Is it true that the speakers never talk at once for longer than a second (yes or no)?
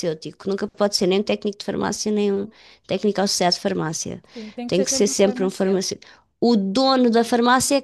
no